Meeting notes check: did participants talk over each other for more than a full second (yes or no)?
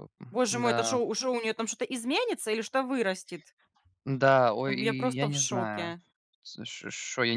yes